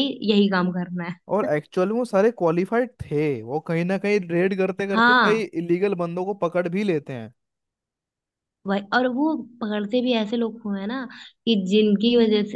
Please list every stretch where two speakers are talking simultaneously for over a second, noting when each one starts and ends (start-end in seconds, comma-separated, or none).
none